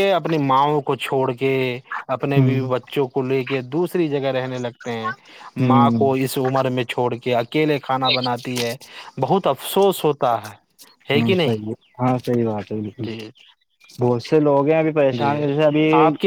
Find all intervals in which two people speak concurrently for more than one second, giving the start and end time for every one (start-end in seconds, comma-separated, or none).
none